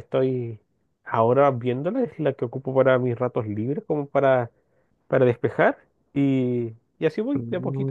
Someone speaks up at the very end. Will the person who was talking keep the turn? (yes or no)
no